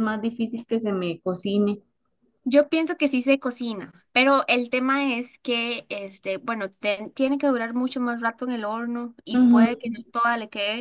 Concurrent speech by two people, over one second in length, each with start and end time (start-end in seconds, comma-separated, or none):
none